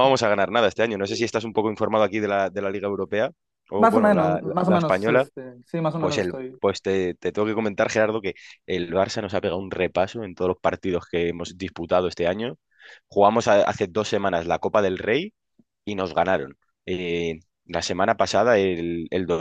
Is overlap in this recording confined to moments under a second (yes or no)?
no